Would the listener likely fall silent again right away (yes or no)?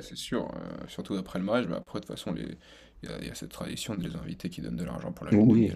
no